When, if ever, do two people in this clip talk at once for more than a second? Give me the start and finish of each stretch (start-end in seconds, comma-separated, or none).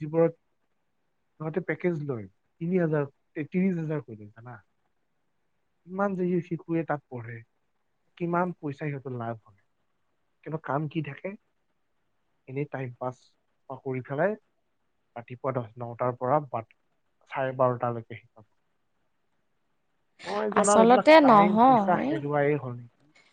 20.6-22.1